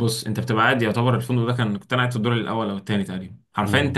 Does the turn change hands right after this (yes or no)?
no